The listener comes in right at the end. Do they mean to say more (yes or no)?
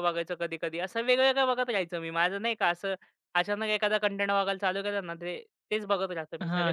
yes